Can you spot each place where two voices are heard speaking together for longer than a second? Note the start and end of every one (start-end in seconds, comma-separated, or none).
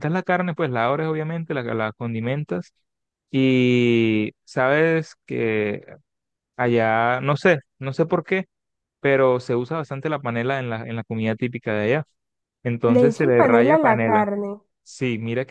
12.9-14.2